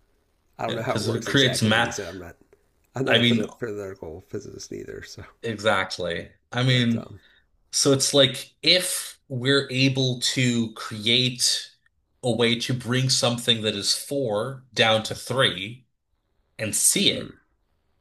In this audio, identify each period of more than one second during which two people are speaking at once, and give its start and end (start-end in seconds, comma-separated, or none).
0.7-1.9